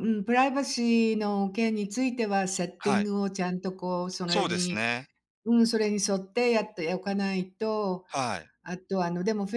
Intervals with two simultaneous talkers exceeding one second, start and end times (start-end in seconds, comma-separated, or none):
none